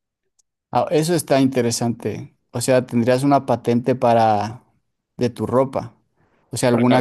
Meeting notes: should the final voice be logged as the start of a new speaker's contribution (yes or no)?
no